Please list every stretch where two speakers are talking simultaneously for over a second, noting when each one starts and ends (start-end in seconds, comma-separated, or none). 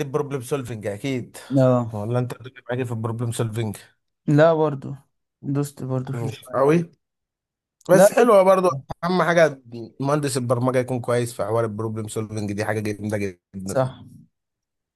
none